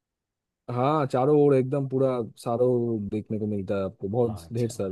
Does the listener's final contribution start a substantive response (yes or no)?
yes